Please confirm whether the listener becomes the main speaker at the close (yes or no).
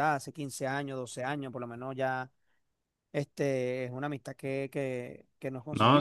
no